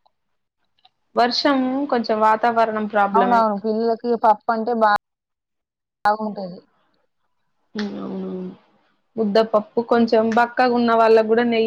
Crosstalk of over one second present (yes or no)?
no